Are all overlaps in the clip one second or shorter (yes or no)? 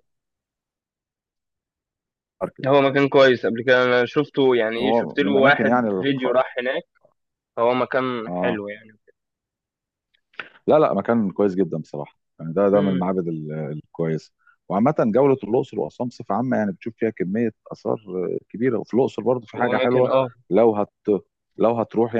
no